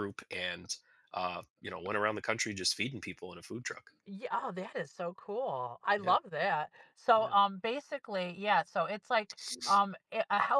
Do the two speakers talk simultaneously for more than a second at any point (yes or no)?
no